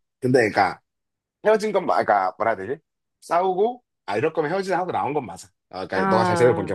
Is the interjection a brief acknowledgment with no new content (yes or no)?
yes